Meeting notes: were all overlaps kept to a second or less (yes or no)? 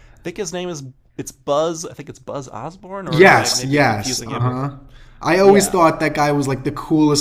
no